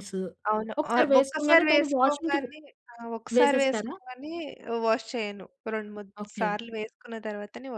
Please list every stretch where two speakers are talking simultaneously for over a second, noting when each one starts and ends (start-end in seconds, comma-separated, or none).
0.8-2.5